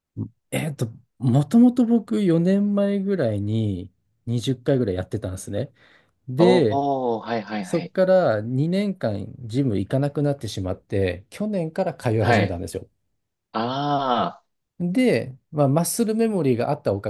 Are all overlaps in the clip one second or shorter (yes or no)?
yes